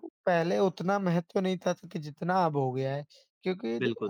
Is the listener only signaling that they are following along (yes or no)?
yes